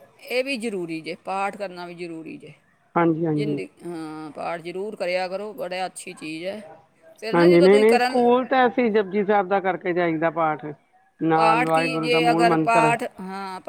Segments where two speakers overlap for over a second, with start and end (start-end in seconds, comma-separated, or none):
11.3-12.9